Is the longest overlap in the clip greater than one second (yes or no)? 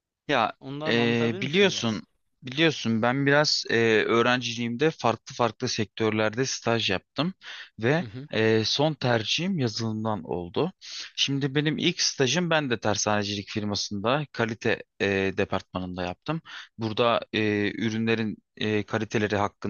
yes